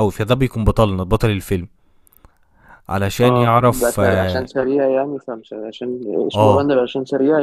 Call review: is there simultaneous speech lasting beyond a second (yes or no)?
yes